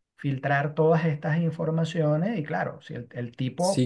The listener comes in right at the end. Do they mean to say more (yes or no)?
yes